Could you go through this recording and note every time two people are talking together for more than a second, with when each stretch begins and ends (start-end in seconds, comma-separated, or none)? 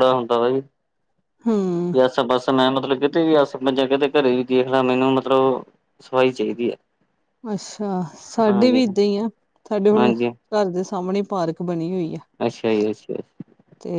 none